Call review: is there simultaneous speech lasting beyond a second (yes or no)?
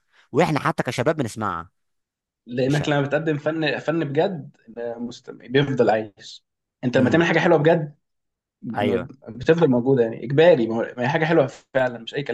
no